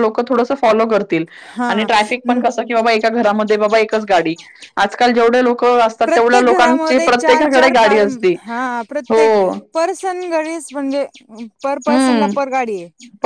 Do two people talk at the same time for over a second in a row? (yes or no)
no